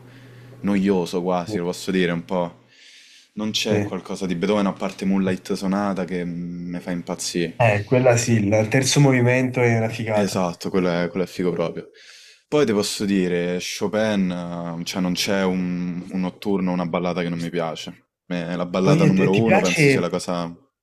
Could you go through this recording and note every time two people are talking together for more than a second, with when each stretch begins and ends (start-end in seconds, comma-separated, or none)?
18.8-20.1